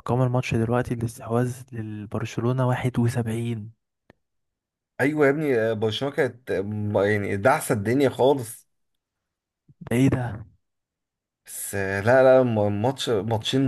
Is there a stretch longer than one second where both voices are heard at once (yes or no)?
no